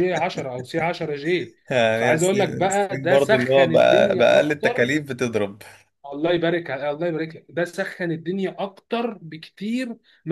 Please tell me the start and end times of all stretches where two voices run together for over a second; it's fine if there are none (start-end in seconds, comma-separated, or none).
1.9-4.9